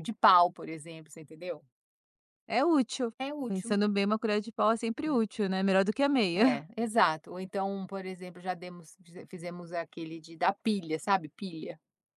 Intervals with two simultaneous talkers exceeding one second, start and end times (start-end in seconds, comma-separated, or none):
none